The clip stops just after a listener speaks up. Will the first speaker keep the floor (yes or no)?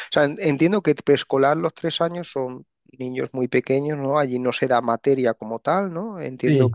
yes